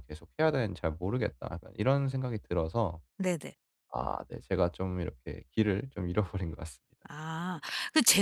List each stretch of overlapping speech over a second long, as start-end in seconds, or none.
none